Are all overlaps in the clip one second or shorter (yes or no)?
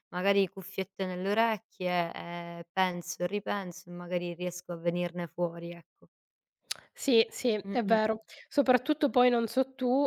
yes